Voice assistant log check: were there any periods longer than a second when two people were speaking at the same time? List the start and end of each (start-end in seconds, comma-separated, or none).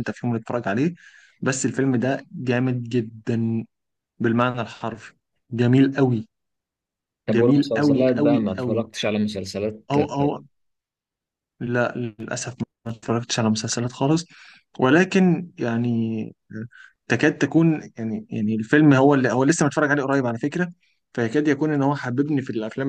7.3-8.8